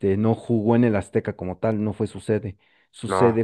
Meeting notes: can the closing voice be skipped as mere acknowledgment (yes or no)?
yes